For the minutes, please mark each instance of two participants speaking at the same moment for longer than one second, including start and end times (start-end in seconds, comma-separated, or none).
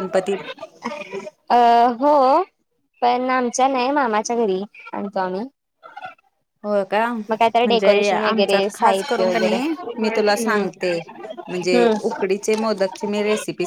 7.3-9.6